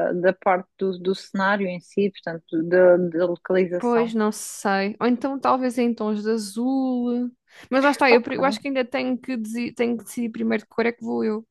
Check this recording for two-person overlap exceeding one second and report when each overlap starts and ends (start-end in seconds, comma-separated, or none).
none